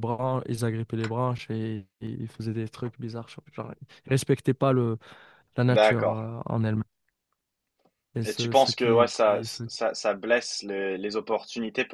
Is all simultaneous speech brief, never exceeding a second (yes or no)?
no